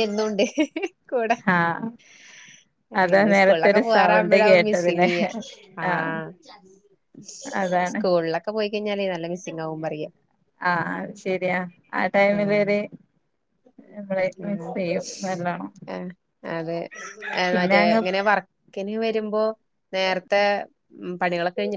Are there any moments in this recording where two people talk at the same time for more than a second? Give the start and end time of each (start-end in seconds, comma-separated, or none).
3.0-5.1